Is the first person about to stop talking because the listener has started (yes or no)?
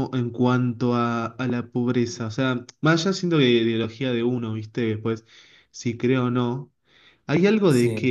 no